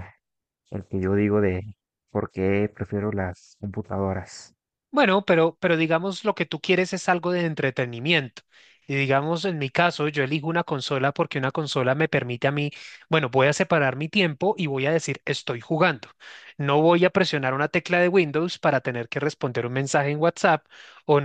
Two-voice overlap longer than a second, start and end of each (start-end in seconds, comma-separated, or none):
none